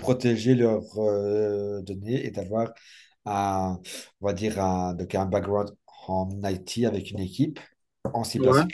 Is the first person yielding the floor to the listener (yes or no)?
no